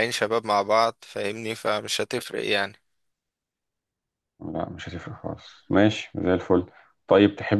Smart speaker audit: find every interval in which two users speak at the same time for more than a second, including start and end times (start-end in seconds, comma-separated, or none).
none